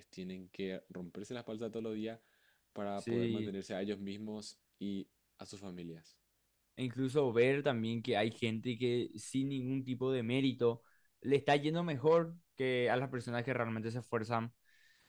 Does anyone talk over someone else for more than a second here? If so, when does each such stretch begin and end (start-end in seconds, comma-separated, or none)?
none